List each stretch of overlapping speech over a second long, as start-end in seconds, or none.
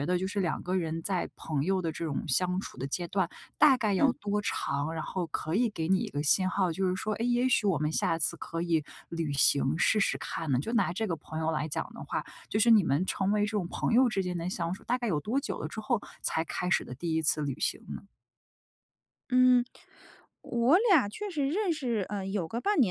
none